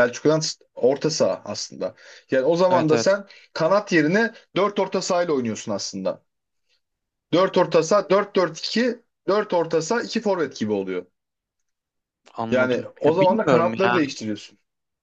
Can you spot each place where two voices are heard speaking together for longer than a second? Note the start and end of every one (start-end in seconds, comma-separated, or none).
12.5-14.0